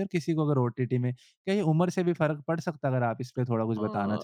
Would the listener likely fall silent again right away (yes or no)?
no